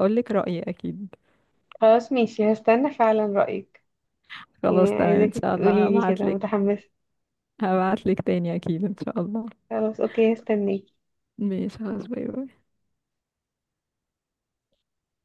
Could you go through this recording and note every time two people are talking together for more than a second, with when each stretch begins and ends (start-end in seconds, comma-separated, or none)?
4.7-6.5